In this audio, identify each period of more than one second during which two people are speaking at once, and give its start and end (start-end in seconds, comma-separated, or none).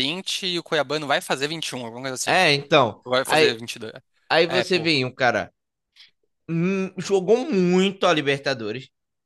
none